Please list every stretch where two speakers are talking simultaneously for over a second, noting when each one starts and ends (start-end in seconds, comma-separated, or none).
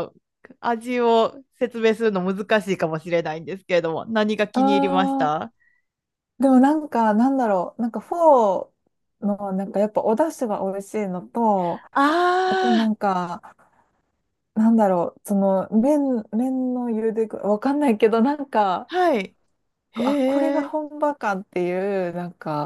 none